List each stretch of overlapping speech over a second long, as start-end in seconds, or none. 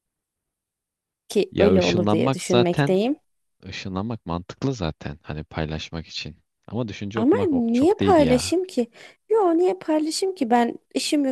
1.5-3.0, 7.2-8.6